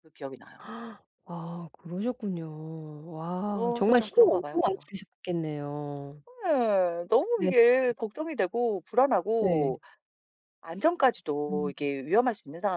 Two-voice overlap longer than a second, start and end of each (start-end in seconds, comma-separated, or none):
3.5-4.9